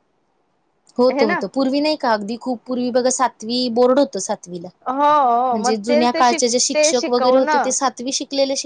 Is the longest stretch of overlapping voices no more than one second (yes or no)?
no